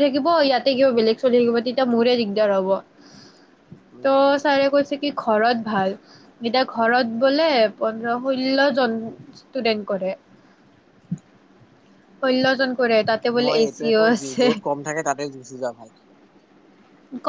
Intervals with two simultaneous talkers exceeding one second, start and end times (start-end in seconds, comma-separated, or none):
none